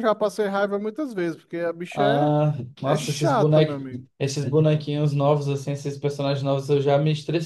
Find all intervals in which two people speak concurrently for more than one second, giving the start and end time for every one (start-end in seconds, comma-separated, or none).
2.8-4.1